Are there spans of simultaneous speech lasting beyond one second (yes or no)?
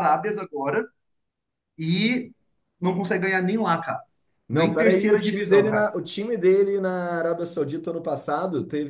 yes